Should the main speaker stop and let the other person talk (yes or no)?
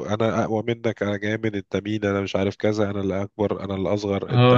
yes